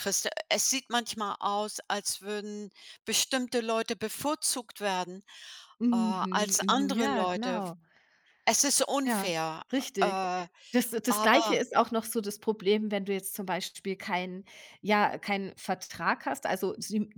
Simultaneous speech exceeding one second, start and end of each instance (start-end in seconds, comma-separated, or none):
5.9-7.6